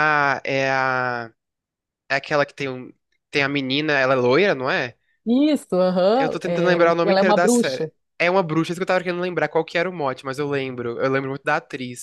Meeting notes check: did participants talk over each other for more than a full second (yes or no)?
yes